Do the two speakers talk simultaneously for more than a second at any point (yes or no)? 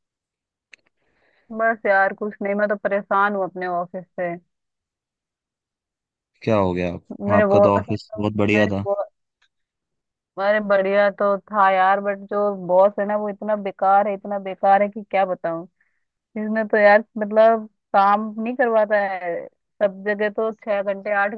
no